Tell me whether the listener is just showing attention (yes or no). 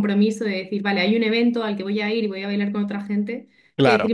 yes